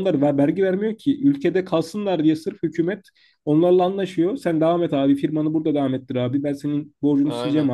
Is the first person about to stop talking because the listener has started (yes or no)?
no